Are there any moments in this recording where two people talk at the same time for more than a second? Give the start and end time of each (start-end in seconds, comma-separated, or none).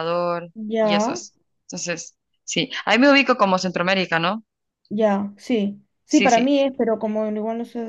none